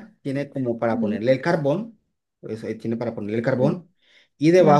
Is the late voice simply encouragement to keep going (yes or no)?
yes